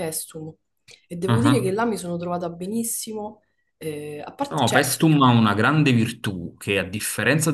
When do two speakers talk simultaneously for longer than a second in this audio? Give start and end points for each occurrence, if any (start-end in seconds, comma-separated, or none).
none